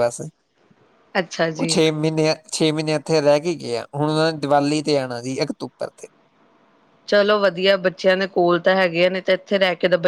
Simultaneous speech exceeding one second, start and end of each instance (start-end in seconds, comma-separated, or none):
none